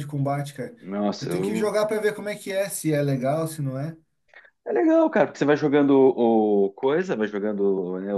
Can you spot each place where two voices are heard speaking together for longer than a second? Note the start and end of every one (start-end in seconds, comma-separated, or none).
none